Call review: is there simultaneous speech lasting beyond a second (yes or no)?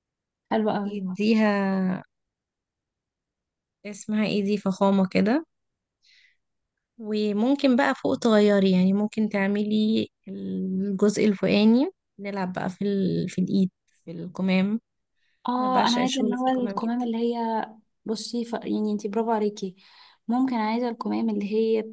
yes